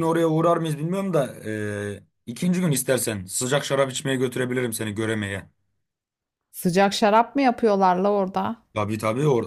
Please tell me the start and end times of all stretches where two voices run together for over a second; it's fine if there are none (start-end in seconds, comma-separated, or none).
none